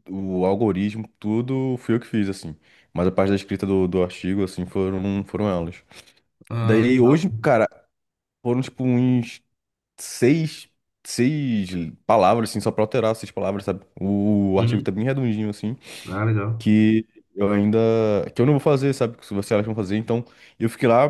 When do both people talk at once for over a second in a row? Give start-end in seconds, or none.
none